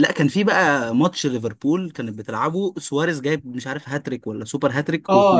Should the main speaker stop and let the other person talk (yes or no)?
yes